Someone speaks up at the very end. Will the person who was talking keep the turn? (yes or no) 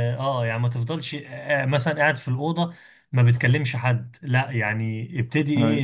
yes